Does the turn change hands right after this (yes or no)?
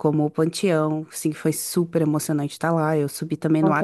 no